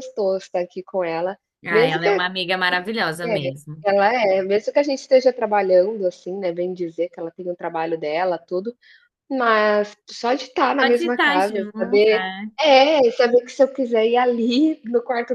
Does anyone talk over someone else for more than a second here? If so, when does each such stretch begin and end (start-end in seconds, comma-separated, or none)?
10.8-12.5